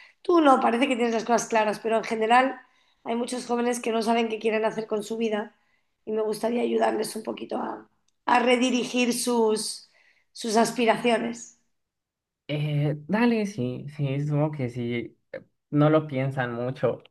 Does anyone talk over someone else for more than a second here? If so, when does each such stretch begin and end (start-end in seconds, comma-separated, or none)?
none